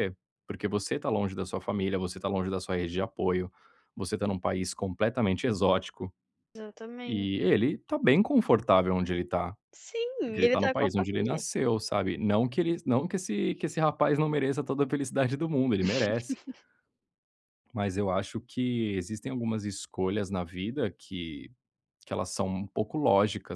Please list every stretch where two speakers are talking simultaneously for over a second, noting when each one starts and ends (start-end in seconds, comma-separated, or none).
10.2-11.5